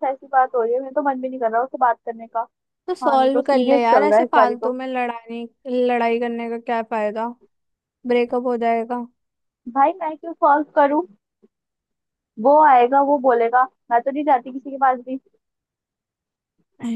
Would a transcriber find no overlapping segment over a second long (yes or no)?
no